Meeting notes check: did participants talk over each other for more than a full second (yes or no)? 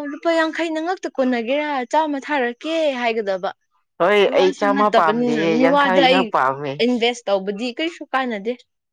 yes